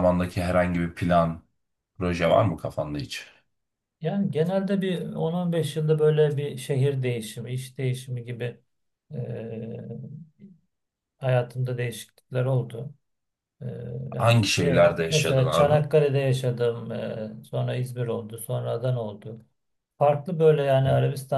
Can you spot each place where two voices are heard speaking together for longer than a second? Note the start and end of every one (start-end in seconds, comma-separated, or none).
14.2-15.8